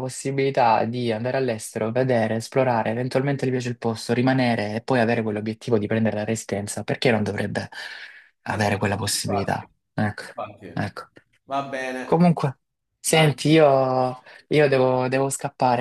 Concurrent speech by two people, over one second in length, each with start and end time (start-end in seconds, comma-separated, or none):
8.5-9.7